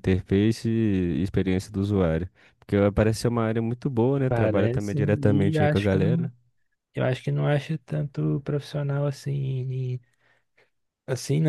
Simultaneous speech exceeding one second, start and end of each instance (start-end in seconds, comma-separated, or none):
4.3-6.3